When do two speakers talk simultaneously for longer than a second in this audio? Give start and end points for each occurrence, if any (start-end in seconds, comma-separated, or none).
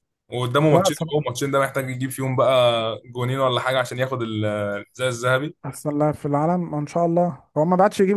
none